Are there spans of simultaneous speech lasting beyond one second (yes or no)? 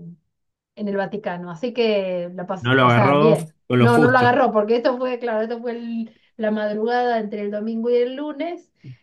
yes